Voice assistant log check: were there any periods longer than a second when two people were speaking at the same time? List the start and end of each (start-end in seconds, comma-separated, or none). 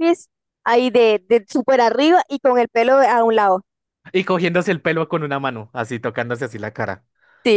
none